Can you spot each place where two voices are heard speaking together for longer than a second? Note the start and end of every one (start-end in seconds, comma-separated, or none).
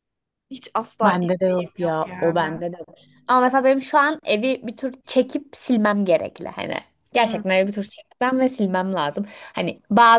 1.0-2.6